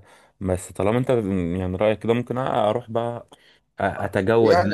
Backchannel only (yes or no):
no